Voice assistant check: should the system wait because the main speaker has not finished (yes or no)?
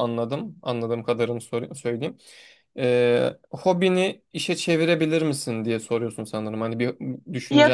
no